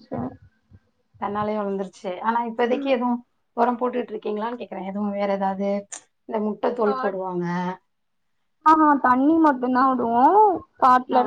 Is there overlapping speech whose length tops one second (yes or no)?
no